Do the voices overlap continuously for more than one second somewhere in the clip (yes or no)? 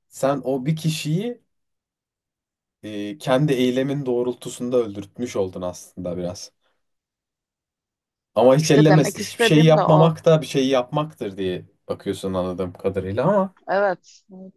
yes